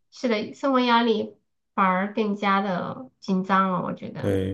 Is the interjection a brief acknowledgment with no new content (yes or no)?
no